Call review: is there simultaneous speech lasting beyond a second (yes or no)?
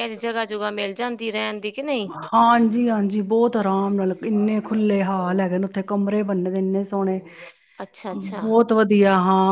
no